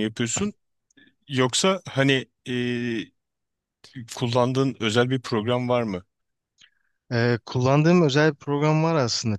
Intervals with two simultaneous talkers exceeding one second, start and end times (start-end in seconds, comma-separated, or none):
none